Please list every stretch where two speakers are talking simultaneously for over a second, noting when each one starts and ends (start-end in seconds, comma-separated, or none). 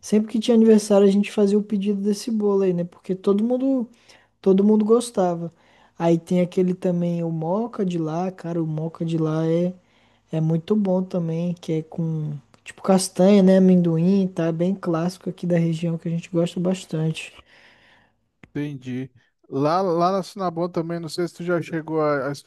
none